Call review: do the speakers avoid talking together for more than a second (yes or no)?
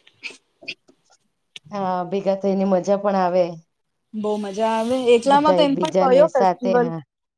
no